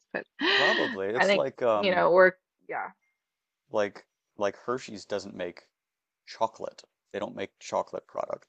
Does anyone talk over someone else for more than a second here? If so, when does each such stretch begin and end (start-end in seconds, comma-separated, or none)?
0.5-2.1